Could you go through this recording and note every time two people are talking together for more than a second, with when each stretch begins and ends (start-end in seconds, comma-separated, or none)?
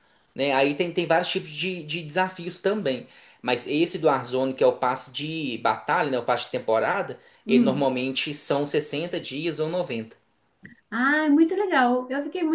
none